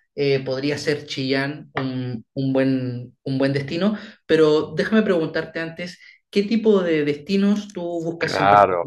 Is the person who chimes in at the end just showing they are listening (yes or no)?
no